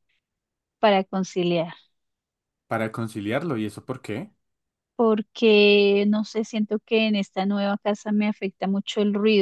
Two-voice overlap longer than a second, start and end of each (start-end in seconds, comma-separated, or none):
none